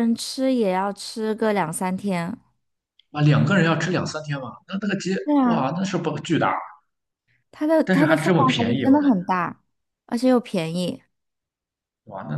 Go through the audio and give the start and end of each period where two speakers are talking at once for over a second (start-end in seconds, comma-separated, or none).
7.8-9.2